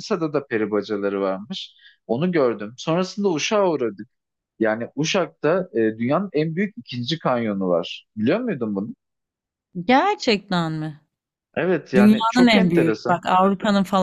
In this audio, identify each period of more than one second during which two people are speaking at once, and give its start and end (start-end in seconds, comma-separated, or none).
11.9-13.2